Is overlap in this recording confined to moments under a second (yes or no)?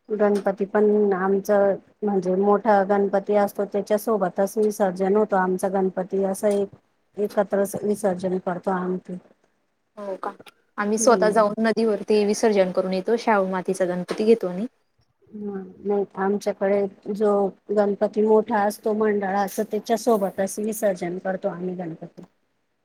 yes